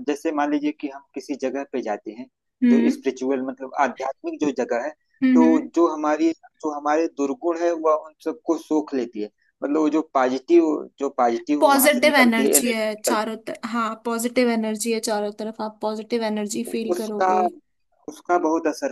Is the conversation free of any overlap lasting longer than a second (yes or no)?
no